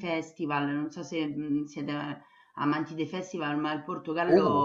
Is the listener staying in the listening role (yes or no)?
yes